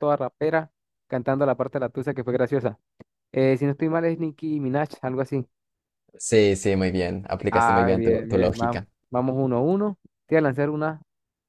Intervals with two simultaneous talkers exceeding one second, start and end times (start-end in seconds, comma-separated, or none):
7.5-8.9